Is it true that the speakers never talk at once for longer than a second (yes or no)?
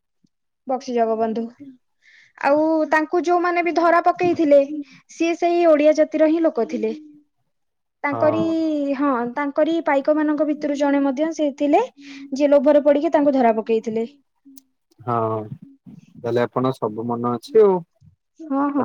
yes